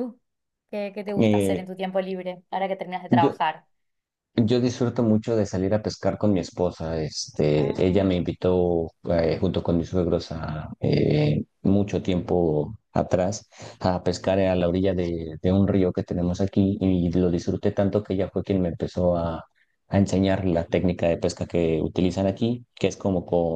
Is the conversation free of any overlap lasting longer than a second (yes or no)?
yes